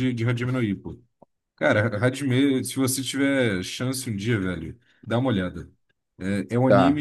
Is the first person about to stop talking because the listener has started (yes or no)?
no